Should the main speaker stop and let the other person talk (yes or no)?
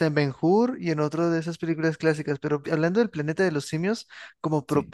no